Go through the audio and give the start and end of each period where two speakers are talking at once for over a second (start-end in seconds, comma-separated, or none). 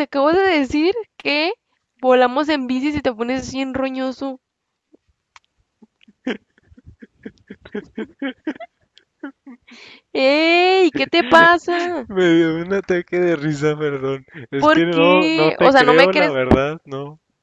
14.6-16.4